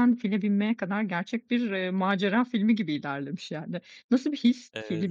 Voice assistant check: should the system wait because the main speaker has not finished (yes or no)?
yes